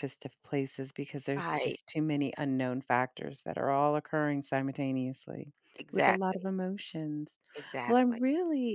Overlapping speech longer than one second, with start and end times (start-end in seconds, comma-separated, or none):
none